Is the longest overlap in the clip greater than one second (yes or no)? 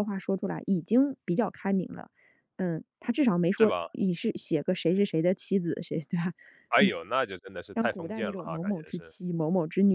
yes